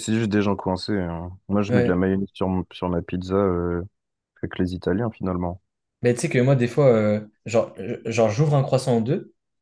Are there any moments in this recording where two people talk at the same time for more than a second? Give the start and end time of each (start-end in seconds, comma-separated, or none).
none